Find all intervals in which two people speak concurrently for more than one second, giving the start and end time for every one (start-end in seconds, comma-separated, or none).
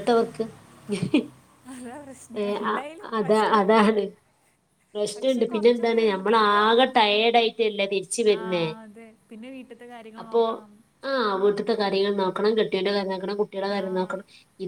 5.2-7.3